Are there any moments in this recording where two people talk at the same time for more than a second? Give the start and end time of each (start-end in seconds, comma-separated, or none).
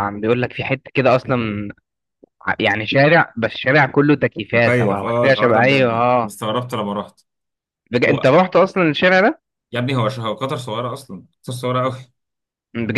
4.5-6.3